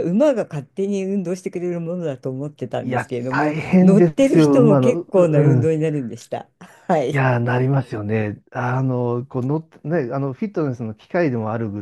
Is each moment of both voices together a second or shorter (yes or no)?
no